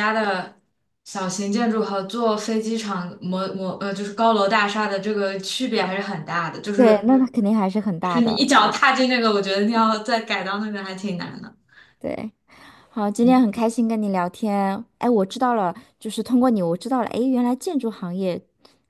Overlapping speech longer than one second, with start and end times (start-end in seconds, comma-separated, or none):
none